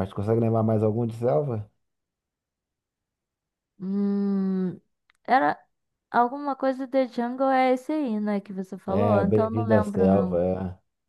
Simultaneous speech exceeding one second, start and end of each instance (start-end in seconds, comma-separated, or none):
8.9-10.4